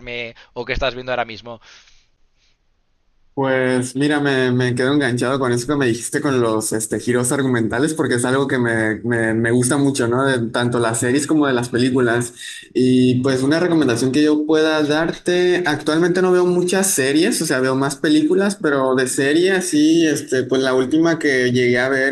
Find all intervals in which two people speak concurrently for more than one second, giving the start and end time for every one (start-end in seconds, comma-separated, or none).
none